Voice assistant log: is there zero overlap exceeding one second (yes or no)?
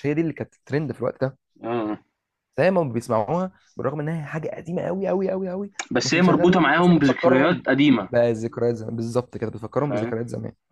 no